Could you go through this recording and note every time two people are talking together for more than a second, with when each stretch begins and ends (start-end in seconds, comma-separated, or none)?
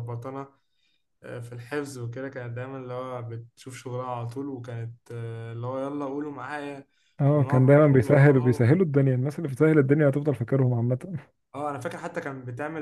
7.3-8.7